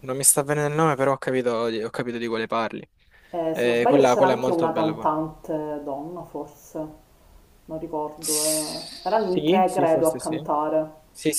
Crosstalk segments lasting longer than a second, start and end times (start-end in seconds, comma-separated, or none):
3.5-5.1, 8.2-10.3